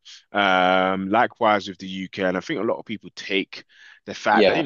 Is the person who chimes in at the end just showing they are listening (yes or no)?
yes